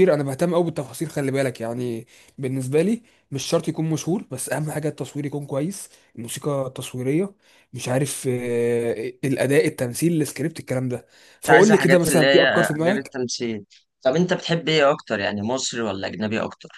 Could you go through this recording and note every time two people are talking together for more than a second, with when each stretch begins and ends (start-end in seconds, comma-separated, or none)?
11.4-13.2